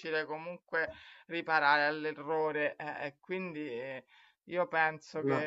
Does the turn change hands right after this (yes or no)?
no